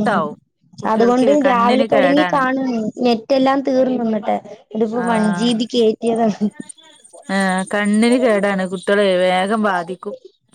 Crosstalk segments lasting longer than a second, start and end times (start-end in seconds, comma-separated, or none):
0.9-2.4